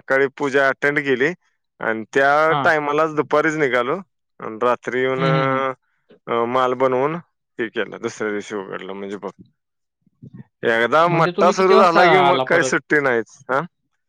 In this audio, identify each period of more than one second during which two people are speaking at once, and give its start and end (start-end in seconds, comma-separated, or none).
11.1-12.7